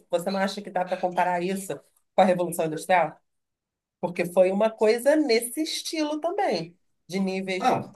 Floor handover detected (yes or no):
no